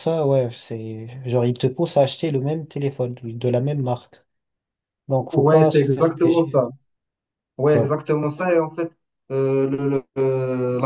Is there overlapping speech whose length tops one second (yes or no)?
yes